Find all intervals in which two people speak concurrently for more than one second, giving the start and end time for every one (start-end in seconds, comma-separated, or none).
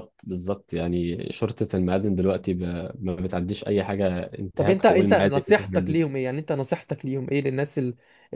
4.6-6.0